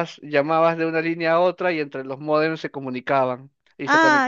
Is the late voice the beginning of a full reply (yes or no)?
yes